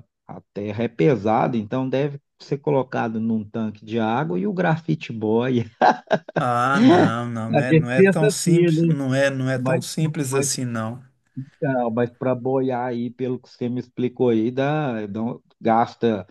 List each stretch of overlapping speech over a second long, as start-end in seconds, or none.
7.5-8.9